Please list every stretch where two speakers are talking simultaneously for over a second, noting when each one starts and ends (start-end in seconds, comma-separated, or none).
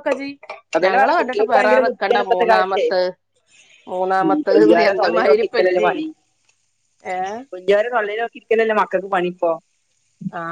0.8-2.9, 4.2-5.9